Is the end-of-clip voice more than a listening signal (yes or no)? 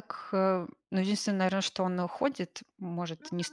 no